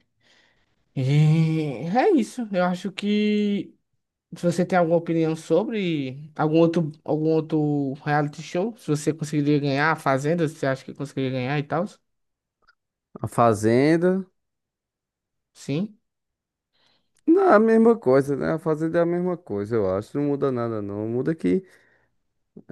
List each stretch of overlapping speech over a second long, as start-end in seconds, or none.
none